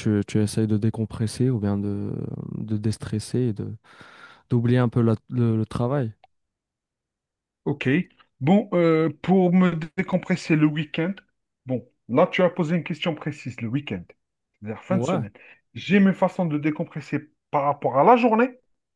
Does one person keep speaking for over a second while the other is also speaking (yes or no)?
no